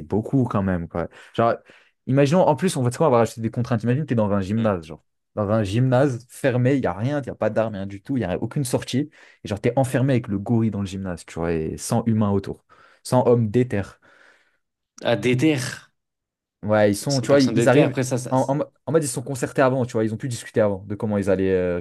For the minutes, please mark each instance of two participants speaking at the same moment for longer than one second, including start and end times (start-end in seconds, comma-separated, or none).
16.9-18.6